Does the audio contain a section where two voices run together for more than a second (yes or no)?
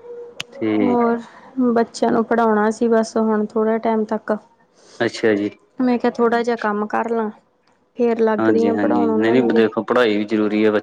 yes